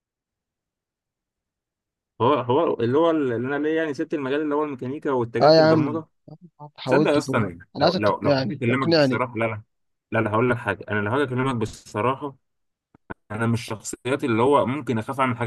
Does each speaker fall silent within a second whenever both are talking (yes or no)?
no